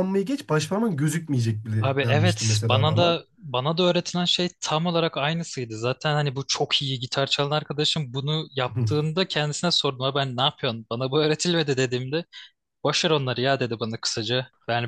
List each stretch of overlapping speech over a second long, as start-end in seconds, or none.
1.8-3.2